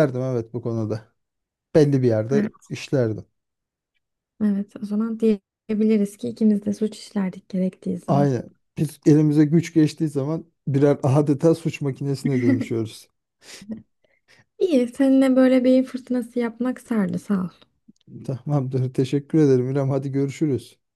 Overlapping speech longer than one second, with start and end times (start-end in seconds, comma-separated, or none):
none